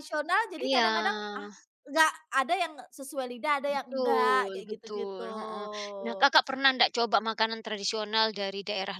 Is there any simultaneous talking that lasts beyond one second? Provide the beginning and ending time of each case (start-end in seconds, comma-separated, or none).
3.7-5.3